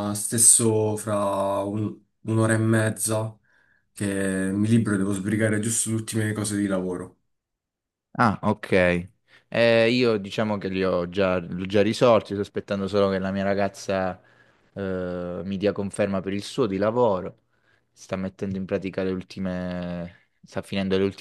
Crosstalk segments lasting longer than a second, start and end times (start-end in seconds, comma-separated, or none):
none